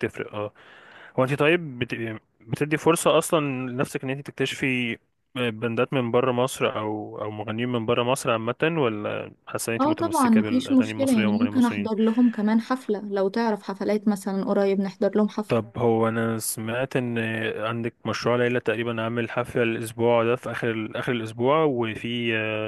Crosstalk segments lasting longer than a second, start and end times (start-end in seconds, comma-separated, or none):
9.8-11.9